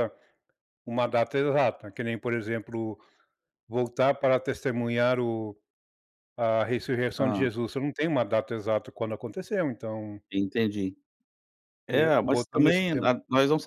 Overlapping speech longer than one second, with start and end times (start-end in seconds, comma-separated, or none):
11.9-13.1